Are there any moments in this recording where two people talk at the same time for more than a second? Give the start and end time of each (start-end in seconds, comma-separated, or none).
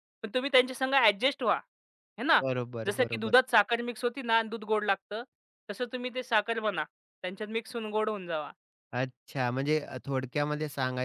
none